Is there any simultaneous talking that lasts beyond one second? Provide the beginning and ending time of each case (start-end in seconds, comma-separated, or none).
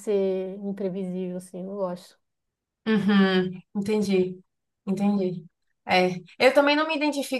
none